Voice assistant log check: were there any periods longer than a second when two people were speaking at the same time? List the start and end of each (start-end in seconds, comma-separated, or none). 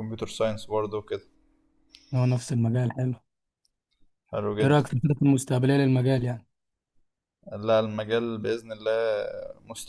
none